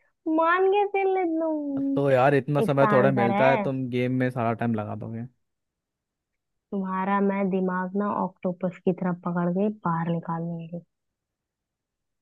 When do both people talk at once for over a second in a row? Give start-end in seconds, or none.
1.9-3.7